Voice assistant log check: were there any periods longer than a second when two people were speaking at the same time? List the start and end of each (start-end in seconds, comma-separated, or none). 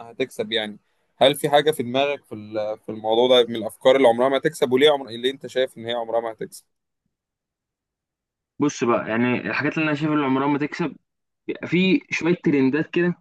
none